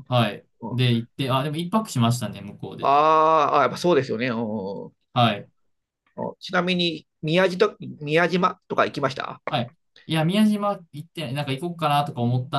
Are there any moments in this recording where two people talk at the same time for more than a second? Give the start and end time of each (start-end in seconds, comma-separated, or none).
none